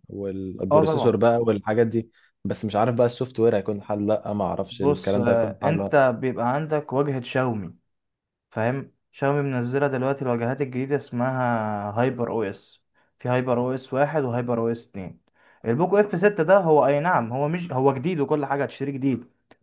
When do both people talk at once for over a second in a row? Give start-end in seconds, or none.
4.7-5.9